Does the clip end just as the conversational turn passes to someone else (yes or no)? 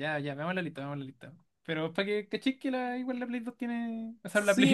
yes